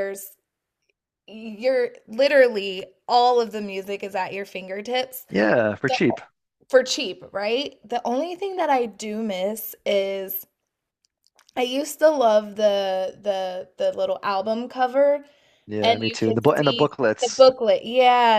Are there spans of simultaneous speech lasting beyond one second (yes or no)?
yes